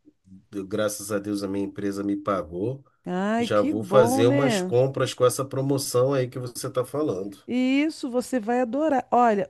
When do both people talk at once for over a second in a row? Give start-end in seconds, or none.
3.4-4.8